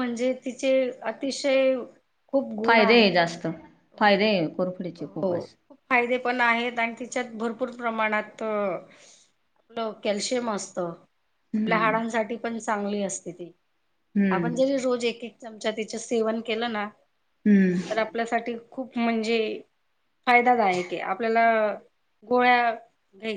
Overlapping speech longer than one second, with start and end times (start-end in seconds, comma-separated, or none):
4.0-5.4